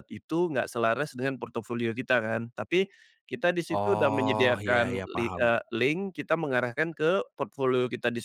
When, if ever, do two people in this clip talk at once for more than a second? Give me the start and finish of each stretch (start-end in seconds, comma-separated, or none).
3.7-5.5